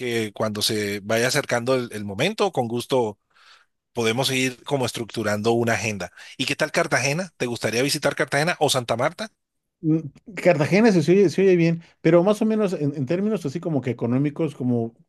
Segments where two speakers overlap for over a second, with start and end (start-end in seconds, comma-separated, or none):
none